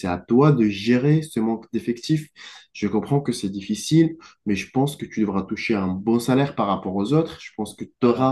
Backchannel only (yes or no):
yes